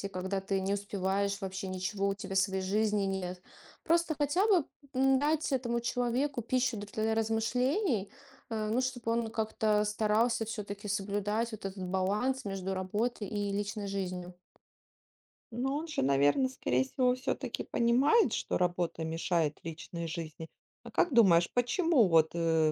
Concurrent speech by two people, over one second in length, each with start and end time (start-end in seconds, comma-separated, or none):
none